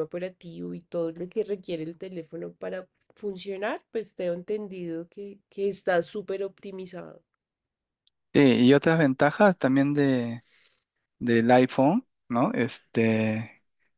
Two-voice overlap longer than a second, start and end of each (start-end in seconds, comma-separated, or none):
none